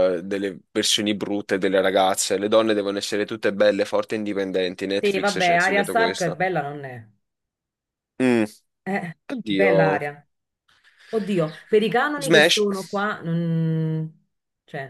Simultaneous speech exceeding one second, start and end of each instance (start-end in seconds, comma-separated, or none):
5.0-6.4